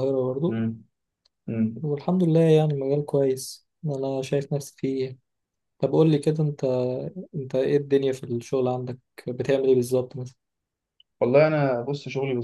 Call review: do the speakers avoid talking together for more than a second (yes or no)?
yes